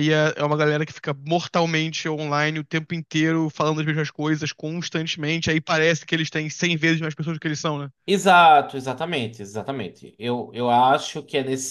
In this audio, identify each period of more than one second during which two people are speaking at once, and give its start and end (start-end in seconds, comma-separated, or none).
none